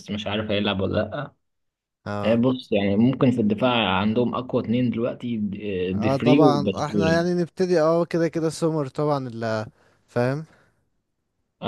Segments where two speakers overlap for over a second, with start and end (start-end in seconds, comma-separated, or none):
5.9-7.3